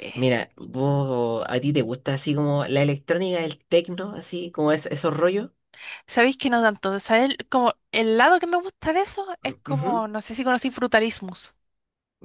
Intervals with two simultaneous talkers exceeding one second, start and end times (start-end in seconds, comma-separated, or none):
none